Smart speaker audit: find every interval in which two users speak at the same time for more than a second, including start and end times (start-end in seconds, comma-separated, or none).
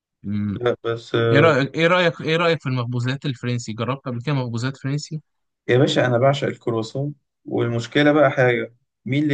none